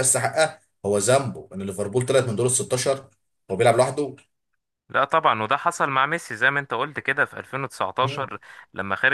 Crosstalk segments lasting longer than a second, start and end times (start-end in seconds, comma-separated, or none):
none